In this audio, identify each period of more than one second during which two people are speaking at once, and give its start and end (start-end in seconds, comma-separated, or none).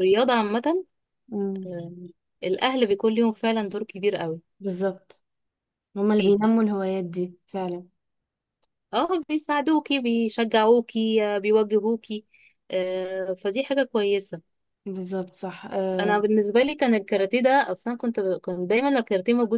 none